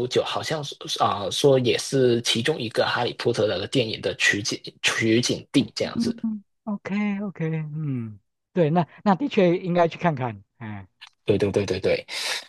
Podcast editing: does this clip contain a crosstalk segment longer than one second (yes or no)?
no